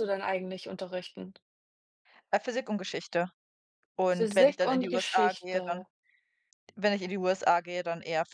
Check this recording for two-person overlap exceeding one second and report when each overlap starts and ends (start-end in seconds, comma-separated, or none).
4.1-5.8